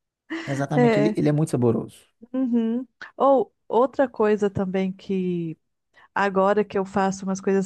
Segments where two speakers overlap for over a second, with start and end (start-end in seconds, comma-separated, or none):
none